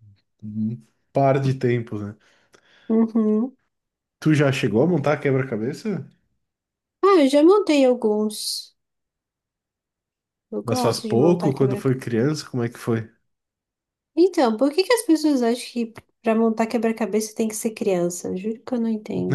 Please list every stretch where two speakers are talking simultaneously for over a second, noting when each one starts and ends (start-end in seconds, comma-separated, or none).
10.6-11.9